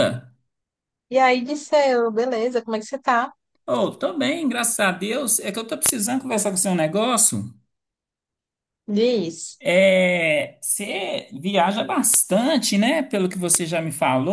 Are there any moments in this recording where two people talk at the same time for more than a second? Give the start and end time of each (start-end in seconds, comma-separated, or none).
none